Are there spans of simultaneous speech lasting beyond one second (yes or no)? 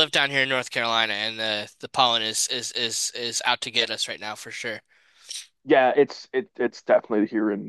no